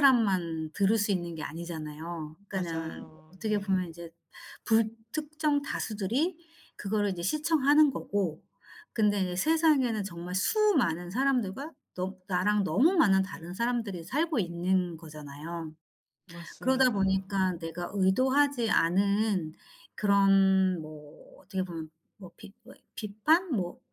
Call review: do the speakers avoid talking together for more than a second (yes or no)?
no